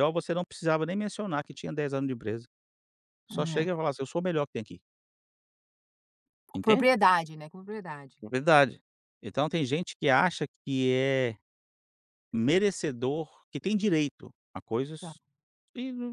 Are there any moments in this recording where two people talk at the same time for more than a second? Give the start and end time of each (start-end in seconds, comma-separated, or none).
none